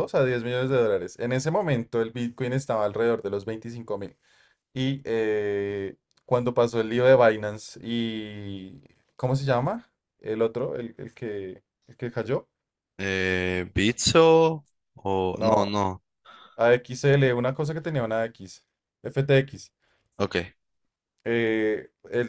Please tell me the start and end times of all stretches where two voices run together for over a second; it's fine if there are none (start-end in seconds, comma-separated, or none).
none